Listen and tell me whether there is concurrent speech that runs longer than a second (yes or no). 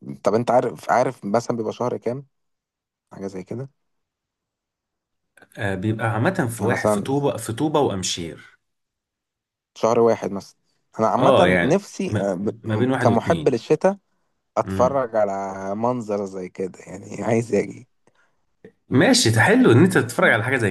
yes